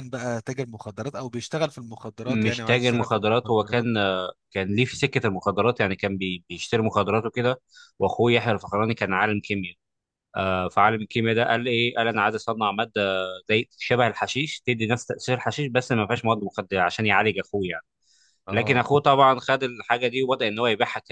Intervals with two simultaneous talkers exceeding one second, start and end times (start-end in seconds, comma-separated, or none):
2.3-3.9